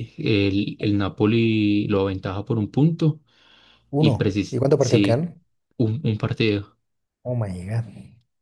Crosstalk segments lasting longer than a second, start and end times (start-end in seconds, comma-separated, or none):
4.0-5.3